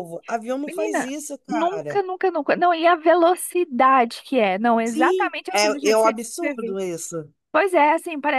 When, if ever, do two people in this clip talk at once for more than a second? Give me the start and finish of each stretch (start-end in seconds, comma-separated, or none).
0.7-2.0, 4.8-6.8